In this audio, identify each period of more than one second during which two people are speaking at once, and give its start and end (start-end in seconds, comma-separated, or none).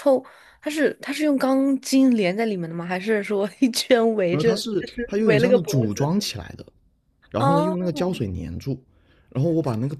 4.3-6.1